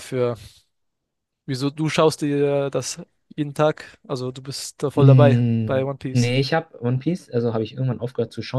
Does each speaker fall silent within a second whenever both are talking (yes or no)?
no